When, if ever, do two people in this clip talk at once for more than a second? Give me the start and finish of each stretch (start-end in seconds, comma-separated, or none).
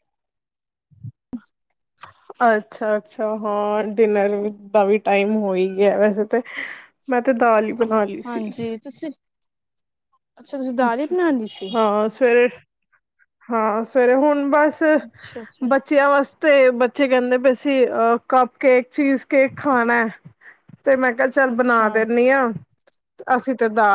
none